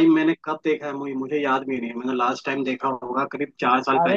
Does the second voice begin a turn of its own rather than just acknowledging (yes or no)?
yes